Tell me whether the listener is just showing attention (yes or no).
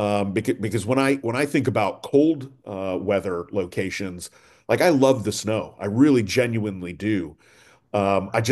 yes